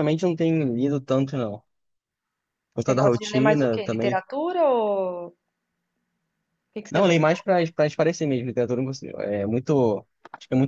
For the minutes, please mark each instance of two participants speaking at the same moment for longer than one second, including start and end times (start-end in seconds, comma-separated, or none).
2.9-4.2